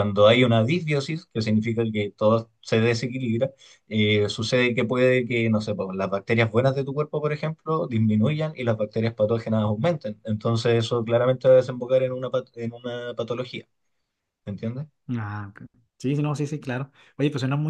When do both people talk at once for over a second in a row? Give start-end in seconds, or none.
none